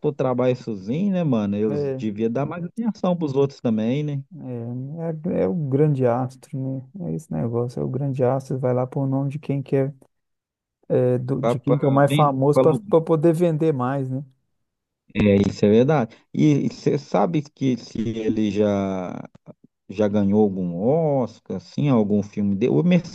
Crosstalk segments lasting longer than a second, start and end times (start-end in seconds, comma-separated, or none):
11.4-12.9